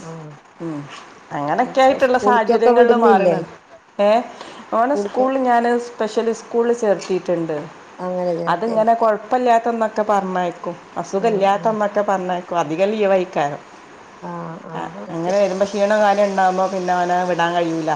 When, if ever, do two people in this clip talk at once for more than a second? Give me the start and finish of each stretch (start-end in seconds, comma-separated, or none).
1.7-3.4